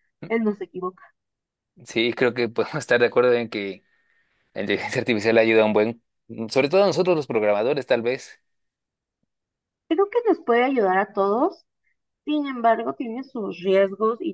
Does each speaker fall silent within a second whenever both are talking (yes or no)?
yes